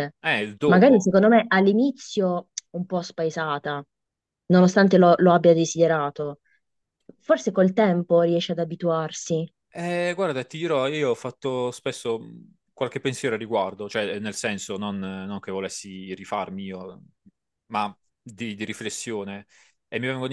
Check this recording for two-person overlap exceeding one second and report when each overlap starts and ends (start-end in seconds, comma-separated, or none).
none